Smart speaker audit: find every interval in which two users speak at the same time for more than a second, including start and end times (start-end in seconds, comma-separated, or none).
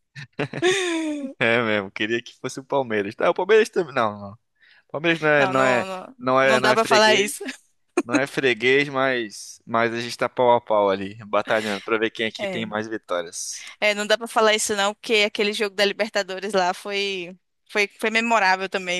5.4-7.4